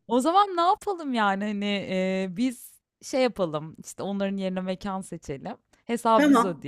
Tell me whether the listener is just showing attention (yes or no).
yes